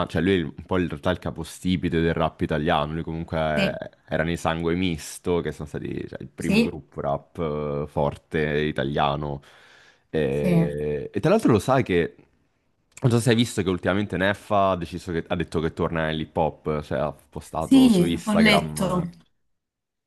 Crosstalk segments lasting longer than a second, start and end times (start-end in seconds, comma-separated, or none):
17.6-19.0